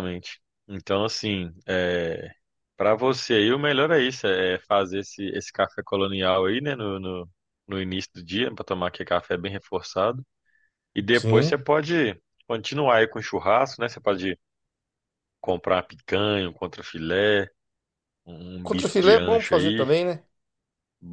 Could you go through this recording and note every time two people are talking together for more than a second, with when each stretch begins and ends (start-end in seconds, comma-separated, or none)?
18.6-19.9